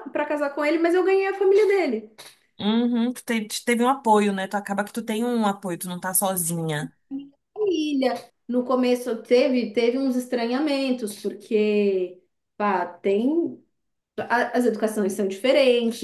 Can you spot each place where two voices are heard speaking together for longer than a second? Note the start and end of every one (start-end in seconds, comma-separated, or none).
none